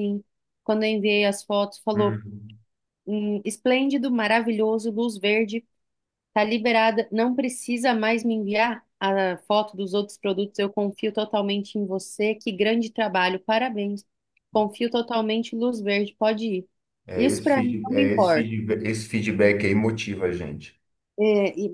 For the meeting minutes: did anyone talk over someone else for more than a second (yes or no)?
yes